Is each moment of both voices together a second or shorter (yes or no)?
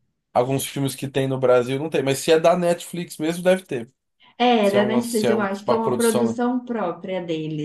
no